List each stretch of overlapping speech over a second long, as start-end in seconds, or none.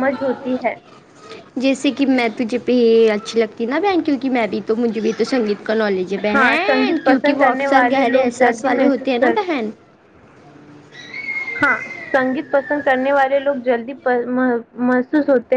6.3-9.5